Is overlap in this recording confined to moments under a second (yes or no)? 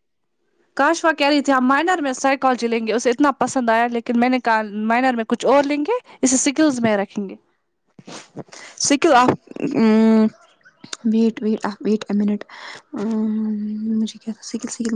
yes